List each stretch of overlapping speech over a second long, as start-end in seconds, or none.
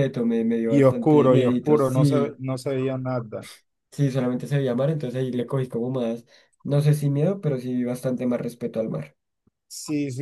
0.7-2.4